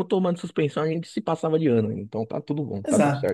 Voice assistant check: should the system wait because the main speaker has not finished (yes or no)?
no